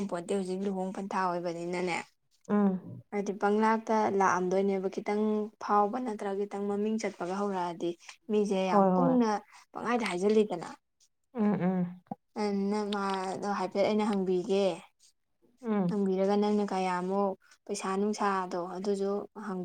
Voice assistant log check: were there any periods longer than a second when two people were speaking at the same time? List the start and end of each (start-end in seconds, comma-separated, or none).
none